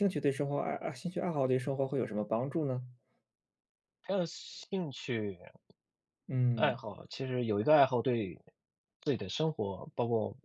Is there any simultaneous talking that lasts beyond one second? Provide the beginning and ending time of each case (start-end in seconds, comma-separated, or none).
none